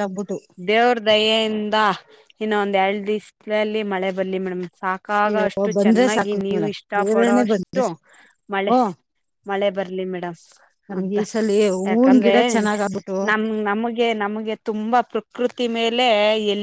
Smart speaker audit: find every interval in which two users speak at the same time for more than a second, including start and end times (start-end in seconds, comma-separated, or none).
5.3-7.8